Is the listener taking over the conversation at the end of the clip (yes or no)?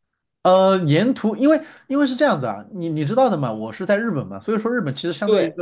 no